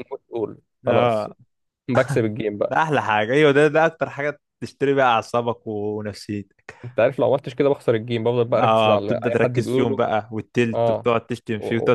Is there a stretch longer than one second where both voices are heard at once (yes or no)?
yes